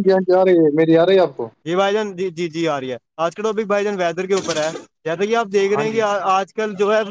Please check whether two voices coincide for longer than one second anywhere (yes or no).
no